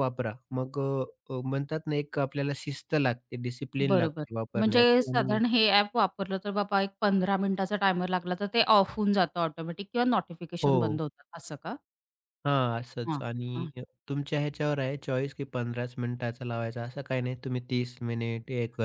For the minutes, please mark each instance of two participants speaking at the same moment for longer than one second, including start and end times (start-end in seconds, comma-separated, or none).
3.9-5.4